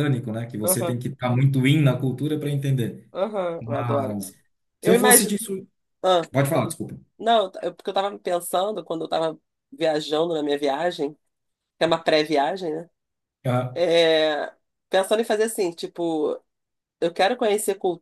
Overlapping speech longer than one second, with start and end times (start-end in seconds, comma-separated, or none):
none